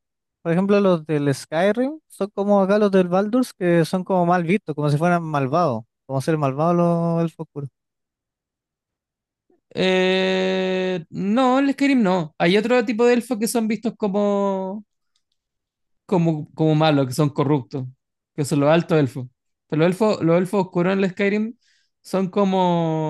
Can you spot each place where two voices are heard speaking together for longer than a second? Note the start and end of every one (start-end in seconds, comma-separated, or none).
none